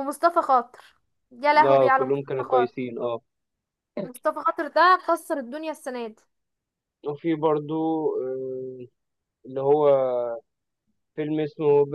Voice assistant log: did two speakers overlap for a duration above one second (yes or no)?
yes